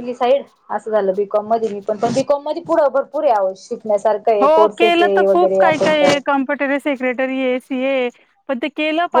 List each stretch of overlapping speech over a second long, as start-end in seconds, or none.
4.4-6.2